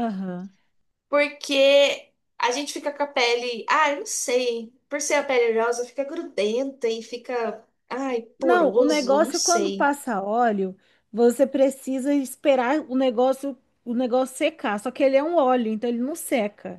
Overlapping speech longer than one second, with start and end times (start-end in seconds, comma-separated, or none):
8.4-9.9